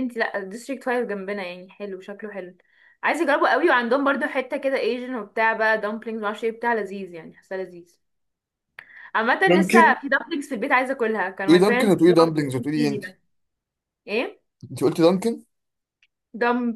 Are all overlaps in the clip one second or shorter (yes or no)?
no